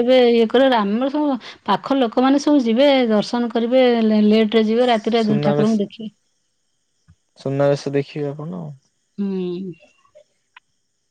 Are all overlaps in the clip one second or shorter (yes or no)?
yes